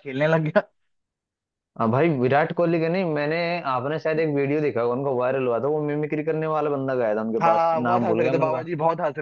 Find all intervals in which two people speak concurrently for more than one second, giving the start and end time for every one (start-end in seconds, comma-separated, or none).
7.4-8.7